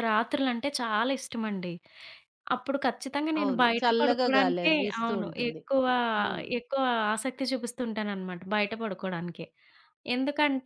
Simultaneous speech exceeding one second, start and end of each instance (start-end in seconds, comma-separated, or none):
3.4-5.6